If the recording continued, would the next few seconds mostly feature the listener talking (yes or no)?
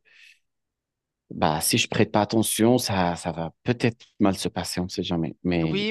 yes